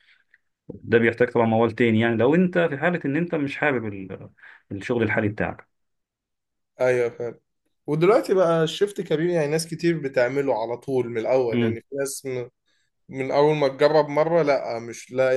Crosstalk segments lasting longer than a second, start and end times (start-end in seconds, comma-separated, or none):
none